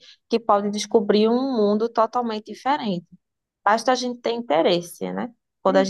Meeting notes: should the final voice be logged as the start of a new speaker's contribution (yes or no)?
no